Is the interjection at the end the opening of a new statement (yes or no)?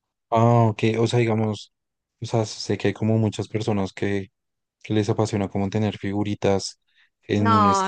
yes